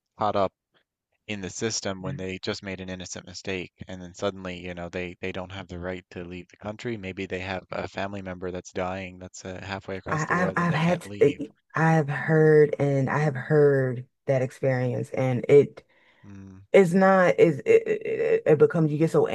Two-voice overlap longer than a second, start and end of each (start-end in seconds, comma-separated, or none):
10.1-11.5